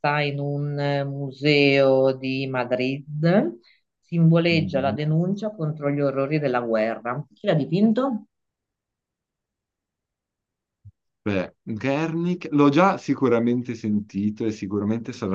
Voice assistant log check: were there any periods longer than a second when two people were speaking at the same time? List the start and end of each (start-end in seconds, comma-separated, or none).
none